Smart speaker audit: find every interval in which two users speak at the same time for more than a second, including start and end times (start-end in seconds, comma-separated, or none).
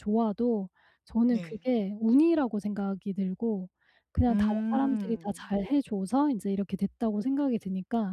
4.3-5.6